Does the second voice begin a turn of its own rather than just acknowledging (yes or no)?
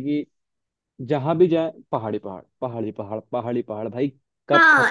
yes